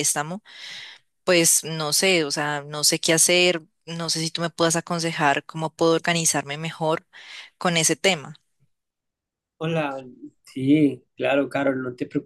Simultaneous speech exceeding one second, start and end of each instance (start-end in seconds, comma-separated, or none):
none